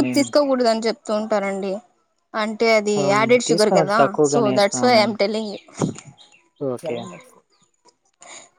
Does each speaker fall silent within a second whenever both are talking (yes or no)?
no